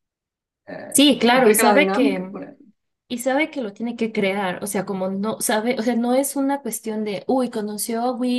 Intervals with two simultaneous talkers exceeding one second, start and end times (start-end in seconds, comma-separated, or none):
0.9-2.4